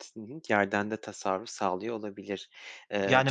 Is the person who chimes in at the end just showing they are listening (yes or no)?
no